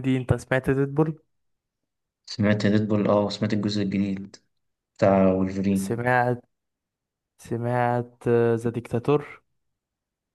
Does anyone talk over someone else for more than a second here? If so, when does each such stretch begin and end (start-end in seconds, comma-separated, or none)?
none